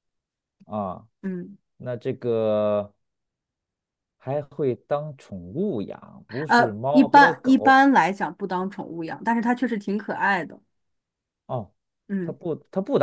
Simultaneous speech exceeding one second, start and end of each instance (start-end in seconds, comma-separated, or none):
6.5-7.8